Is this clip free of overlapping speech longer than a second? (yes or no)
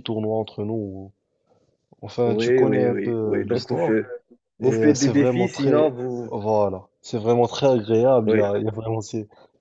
no